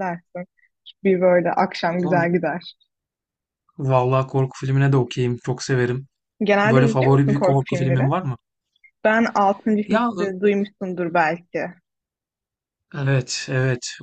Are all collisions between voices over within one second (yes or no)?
no